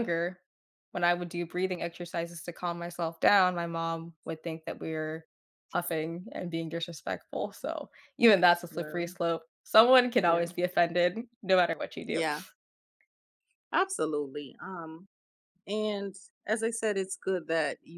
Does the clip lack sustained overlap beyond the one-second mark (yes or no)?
yes